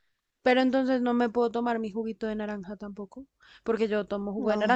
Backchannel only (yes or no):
yes